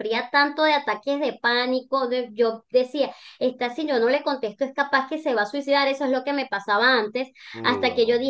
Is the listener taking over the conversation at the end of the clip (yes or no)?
no